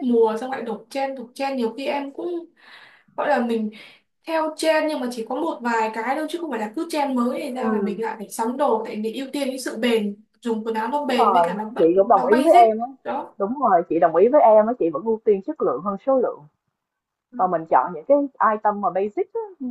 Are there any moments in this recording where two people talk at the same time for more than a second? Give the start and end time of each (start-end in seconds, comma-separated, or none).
10.9-12.9